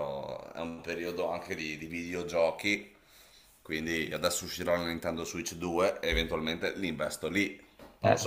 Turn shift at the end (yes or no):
yes